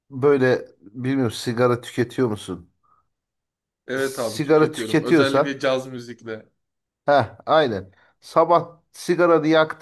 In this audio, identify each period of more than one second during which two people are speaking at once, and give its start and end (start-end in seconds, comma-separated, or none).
4.0-5.5